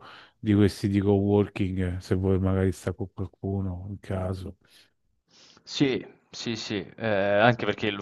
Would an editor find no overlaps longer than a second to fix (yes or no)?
yes